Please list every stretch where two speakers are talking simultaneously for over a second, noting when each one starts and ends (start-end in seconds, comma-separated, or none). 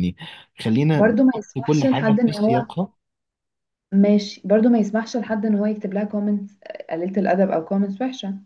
0.9-2.6